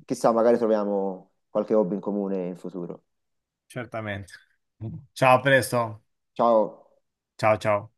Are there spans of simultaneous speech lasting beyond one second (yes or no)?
no